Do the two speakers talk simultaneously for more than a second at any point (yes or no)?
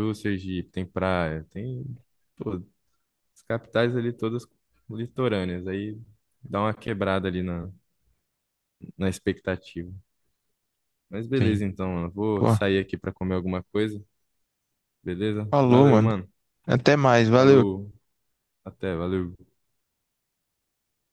no